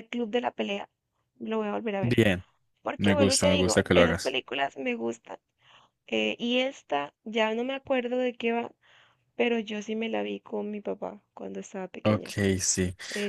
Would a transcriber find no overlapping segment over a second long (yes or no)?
no